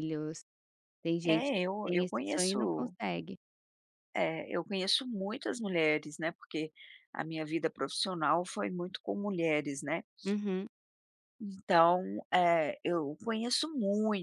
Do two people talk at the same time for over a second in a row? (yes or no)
yes